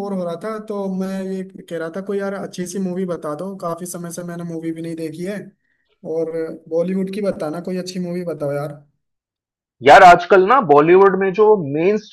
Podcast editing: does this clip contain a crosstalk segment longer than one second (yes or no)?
no